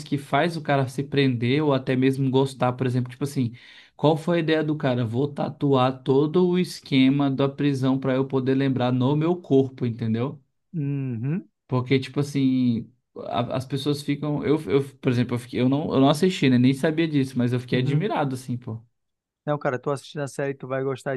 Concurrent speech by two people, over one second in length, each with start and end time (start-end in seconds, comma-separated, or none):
none